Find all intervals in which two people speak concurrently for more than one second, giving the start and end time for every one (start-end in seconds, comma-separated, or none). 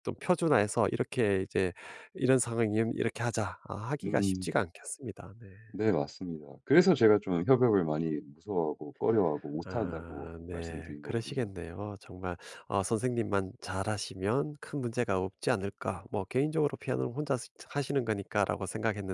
9.6-11.5